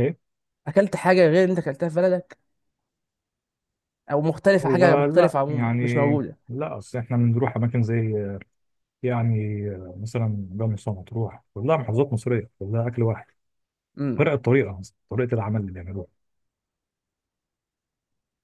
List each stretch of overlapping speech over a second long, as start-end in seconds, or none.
4.6-6.1